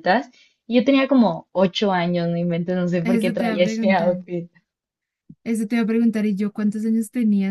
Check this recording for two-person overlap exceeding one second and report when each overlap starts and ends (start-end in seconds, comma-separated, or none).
3.0-4.2